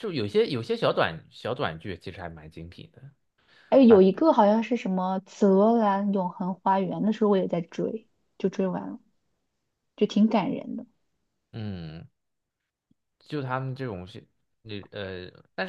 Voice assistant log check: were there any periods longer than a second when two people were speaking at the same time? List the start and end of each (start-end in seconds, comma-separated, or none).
none